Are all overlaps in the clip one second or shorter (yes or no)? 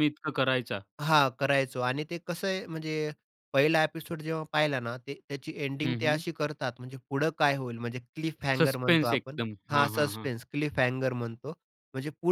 no